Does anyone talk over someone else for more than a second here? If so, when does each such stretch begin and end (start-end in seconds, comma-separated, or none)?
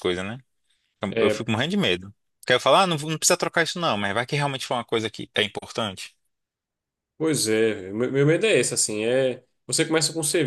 none